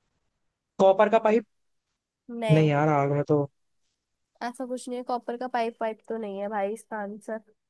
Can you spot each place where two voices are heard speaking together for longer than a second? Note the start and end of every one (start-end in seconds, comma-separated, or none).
none